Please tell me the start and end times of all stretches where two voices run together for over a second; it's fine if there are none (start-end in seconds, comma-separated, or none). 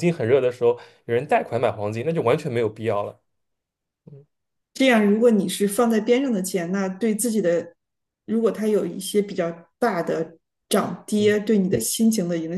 none